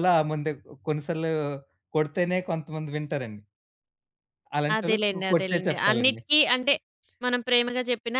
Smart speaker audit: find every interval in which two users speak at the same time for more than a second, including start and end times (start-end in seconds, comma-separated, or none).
4.8-6.2